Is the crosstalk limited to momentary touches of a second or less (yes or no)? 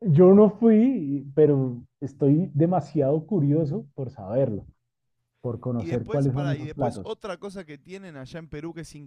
no